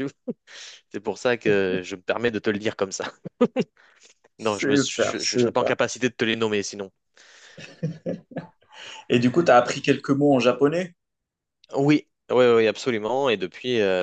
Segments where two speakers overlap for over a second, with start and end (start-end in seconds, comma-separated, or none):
4.4-5.8